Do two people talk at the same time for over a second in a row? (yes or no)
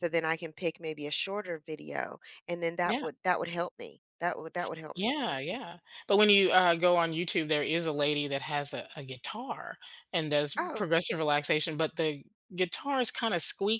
no